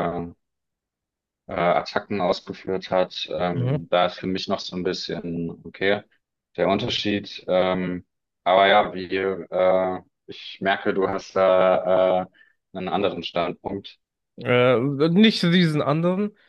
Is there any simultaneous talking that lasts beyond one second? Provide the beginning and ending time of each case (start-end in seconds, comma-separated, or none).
none